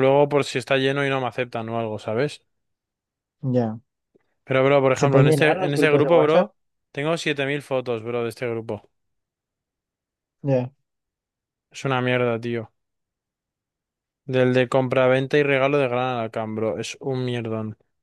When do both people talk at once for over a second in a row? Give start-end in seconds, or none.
4.9-6.5